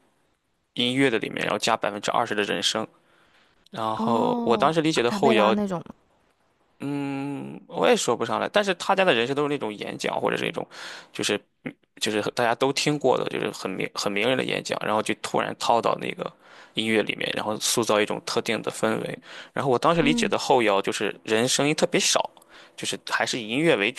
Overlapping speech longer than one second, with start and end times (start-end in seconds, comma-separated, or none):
4.0-5.5